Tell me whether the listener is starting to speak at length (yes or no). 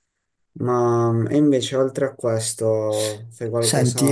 yes